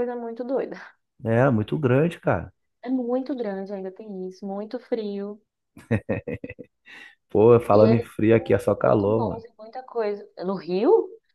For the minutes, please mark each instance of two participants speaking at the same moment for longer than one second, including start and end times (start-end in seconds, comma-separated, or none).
7.7-9.4